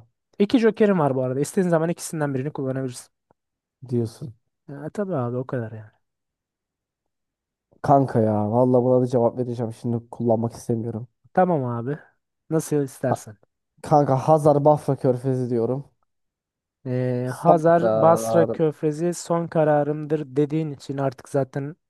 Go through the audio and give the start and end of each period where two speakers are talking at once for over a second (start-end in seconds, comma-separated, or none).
17.2-18.6